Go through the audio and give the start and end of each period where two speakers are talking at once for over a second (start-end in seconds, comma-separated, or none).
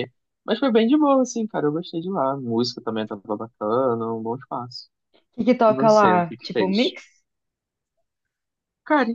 5.7-7.0